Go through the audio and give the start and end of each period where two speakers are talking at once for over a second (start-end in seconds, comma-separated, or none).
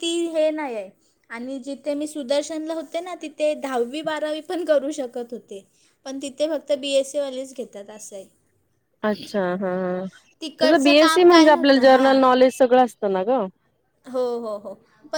10.6-12.2